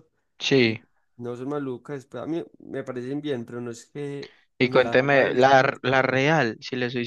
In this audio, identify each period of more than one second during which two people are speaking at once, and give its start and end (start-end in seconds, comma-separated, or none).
4.6-6.2